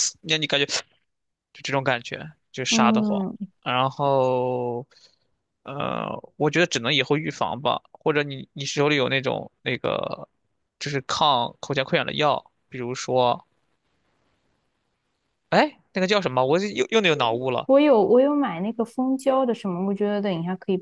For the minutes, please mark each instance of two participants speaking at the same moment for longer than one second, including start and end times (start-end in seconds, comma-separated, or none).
none